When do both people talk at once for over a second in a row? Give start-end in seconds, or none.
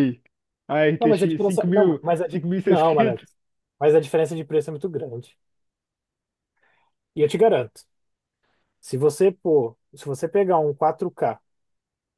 1.0-3.2